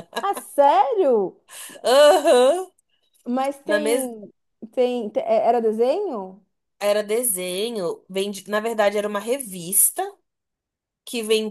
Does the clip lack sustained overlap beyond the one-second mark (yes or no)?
yes